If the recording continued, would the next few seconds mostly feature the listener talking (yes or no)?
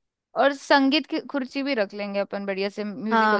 yes